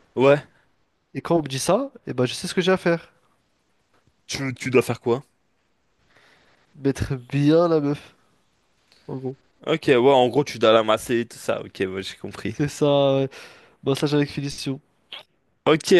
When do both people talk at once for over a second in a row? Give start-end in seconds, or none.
none